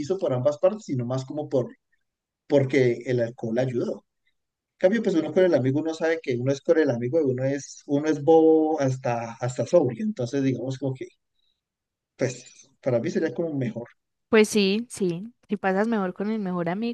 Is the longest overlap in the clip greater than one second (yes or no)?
no